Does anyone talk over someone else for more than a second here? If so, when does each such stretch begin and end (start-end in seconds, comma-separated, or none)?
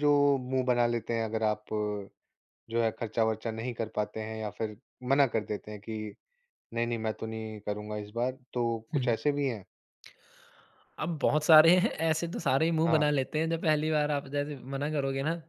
none